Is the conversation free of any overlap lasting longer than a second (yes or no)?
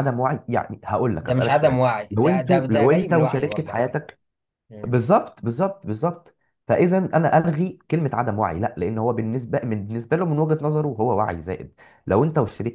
no